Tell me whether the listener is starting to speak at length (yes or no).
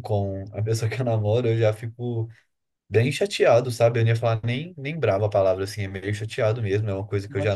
no